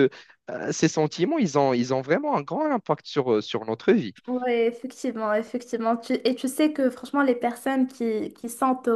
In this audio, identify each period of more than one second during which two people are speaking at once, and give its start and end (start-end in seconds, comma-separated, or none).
none